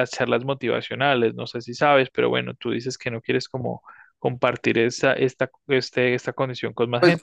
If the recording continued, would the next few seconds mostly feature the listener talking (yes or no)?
yes